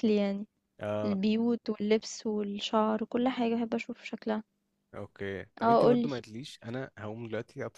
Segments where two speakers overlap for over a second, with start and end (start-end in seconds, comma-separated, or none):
none